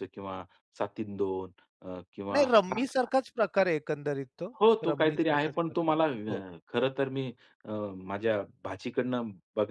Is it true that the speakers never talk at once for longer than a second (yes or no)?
no